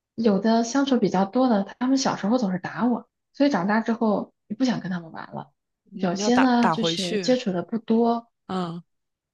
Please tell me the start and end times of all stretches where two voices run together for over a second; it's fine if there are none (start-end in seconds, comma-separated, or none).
5.9-7.4